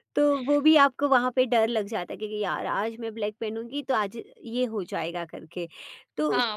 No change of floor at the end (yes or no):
no